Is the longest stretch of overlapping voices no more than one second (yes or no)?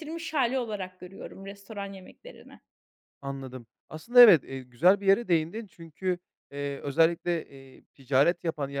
yes